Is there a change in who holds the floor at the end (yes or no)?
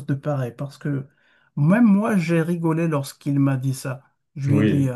no